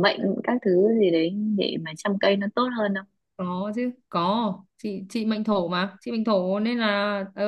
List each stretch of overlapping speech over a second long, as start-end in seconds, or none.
none